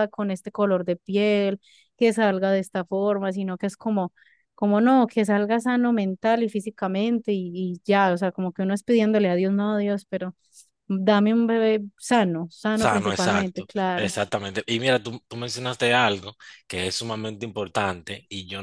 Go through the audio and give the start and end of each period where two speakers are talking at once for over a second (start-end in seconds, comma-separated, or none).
12.7-14.1